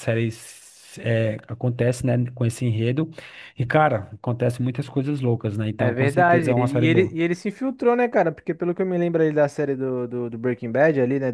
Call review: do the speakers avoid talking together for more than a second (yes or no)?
no